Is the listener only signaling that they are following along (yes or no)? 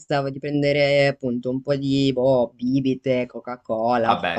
yes